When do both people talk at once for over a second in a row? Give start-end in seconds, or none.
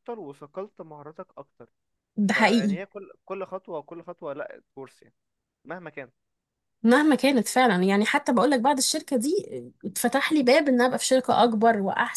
none